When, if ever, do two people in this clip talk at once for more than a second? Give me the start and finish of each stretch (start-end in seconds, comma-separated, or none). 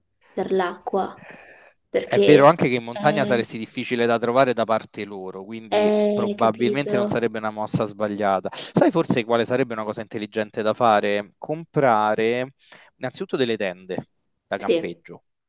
2.0-3.5, 5.7-7.2